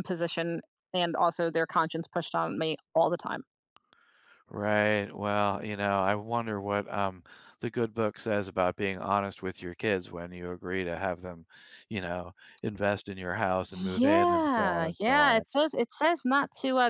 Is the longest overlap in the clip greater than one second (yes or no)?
yes